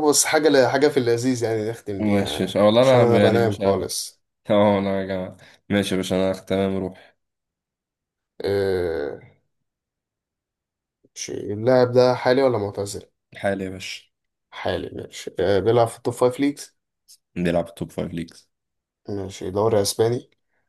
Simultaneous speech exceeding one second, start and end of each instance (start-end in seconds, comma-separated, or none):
2.0-3.9